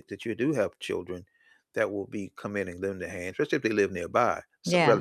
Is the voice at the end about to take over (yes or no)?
yes